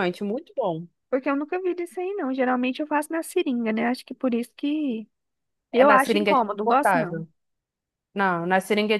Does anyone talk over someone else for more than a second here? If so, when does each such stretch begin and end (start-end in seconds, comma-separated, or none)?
5.7-7.2